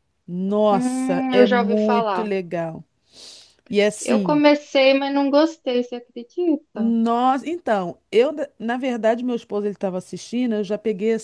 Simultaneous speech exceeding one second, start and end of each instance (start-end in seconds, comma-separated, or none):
0.7-2.3